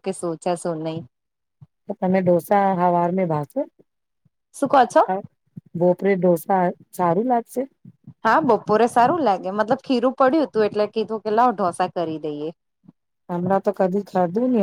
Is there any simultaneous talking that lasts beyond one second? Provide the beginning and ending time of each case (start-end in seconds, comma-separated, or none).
none